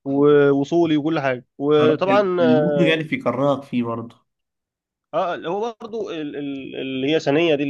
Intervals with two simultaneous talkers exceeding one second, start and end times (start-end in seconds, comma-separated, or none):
1.8-3.0